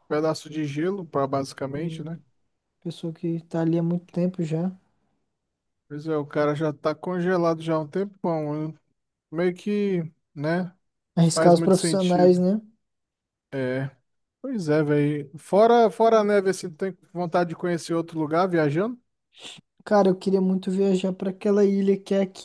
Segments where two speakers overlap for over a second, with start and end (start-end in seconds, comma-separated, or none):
11.2-12.4